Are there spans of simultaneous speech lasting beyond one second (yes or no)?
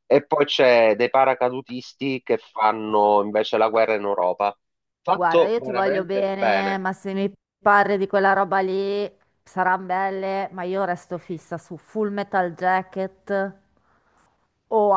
yes